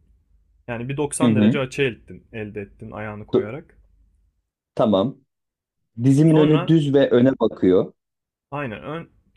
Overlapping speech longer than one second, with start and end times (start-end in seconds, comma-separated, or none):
none